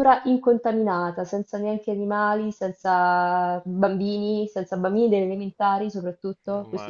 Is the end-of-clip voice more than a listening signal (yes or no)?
yes